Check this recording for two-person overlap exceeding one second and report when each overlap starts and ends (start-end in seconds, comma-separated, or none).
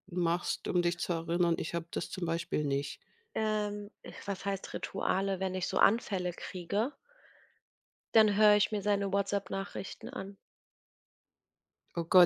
none